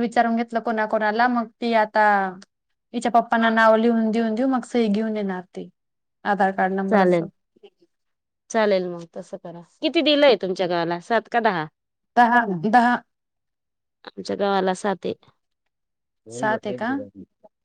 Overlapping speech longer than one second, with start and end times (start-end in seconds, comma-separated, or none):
none